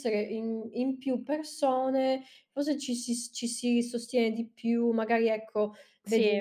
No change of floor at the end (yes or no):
yes